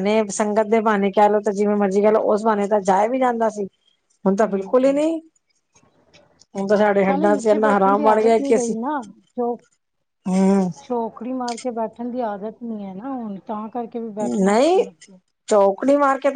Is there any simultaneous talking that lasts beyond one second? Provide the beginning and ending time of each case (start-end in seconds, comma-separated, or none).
7.1-8.7